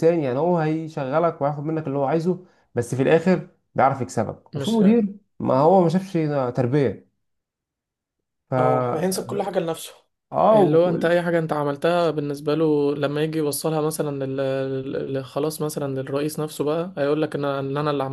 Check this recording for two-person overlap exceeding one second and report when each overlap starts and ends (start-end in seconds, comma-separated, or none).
none